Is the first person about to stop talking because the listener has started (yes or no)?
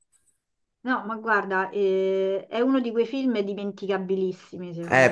yes